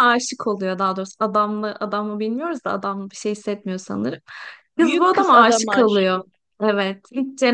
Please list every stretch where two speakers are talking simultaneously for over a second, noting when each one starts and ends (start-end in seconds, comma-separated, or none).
4.8-6.3